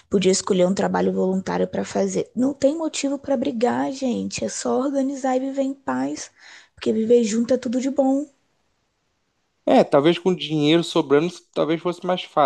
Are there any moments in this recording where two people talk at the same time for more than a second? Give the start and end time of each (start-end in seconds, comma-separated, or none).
none